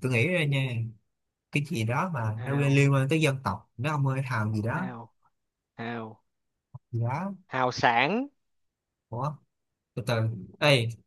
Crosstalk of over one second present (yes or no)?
no